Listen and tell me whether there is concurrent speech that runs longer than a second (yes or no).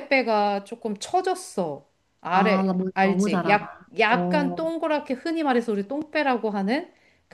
yes